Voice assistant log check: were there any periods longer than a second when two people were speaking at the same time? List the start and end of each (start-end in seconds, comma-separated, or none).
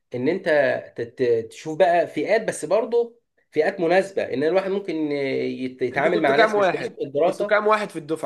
5.9-7.6